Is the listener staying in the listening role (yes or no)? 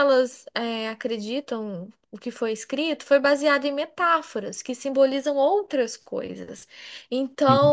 yes